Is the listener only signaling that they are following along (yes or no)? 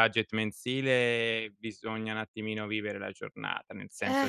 yes